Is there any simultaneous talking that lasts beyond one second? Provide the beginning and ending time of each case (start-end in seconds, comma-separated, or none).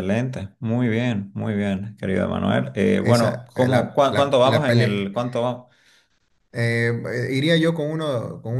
3.0-5.1